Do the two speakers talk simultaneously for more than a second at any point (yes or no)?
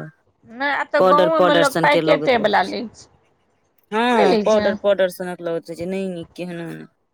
yes